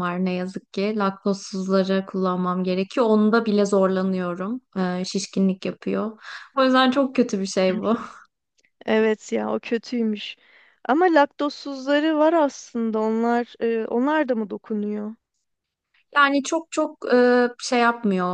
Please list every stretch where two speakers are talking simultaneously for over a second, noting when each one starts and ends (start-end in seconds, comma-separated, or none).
none